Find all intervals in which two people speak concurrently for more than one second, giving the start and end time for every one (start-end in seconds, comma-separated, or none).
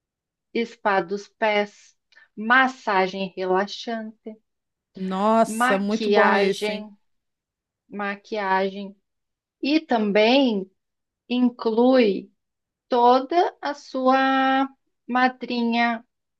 5.5-6.9